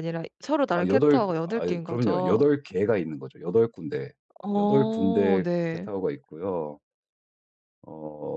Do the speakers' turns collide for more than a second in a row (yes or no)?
yes